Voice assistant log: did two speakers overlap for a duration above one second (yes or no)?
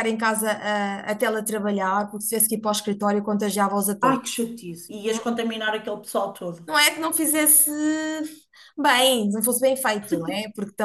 no